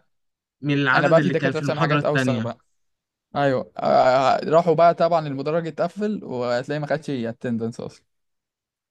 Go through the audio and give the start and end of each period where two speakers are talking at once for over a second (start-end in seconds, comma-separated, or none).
0.9-2.5